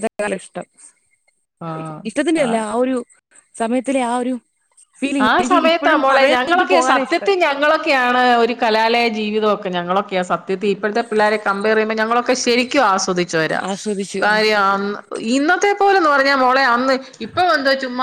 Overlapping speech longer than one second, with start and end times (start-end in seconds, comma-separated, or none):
5.3-7.3